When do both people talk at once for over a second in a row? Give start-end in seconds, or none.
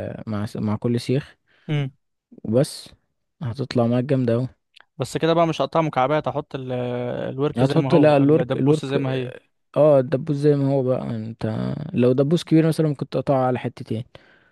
7.6-9.3